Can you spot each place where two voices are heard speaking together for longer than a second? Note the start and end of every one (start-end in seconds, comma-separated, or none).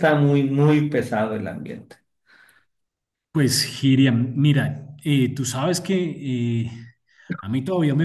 none